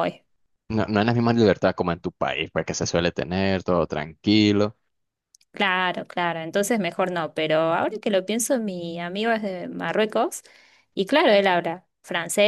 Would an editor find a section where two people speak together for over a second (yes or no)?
no